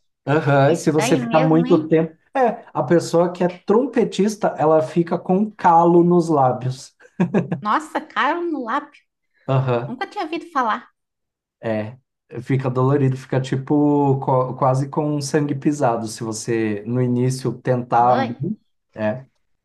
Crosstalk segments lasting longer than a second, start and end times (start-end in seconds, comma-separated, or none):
0.7-1.9